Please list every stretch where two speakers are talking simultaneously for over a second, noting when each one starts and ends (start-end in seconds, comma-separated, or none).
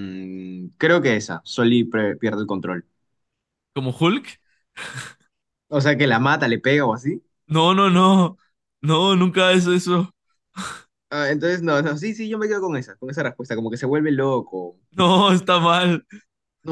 none